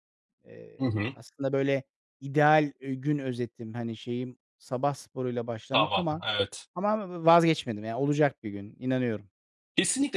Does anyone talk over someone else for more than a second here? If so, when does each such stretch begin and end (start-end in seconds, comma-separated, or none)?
none